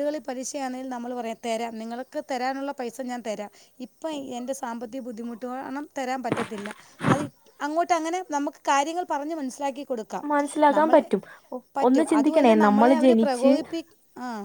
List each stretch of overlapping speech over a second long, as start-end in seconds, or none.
11.9-13.5